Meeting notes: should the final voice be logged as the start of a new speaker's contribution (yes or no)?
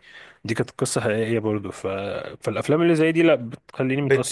yes